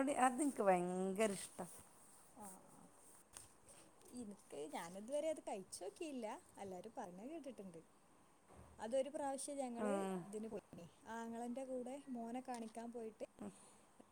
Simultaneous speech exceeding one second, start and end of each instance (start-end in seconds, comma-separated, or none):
none